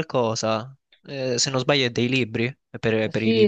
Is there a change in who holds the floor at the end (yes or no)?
yes